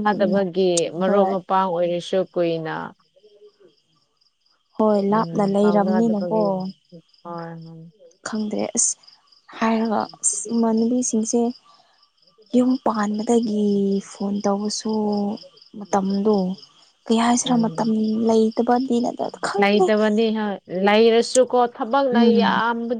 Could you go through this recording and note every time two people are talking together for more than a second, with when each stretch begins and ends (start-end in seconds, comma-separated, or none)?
5.1-6.4